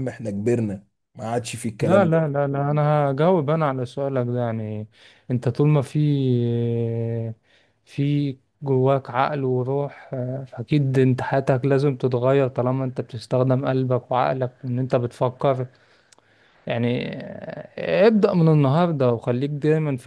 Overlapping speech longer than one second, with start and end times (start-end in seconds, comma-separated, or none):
none